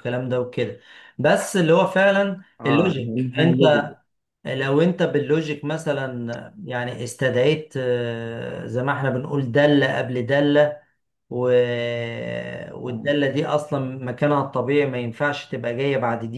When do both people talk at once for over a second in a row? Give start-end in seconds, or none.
2.6-3.8